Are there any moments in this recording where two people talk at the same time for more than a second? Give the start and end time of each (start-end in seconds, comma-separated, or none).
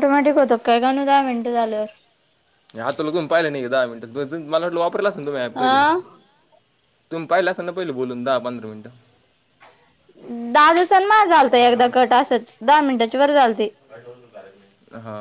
none